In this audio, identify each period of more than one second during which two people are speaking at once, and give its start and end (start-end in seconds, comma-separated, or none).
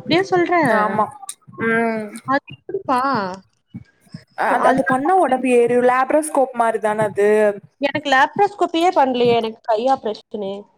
none